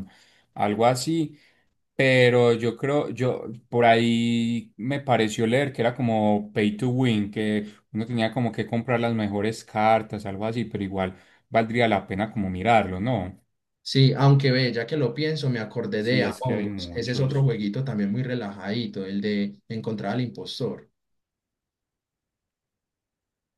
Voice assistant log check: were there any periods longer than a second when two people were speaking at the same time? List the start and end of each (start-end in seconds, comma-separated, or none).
16.0-17.5